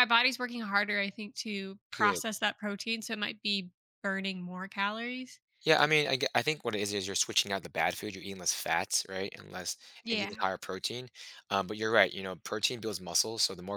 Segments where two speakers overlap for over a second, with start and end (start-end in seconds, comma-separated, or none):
none